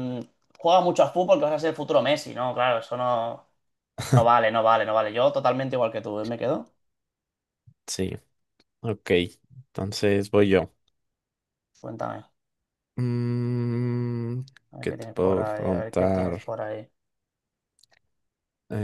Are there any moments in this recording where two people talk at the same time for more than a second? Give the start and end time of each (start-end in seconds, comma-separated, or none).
14.8-16.4